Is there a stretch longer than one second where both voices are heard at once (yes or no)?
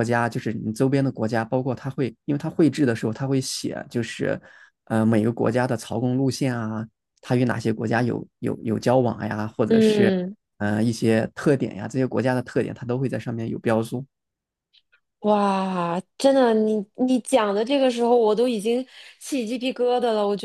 no